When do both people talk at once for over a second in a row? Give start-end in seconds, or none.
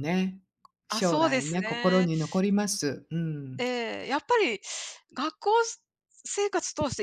0.9-2.1